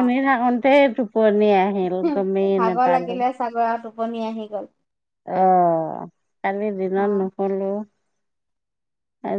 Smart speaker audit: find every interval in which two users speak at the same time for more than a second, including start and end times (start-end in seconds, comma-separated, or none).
none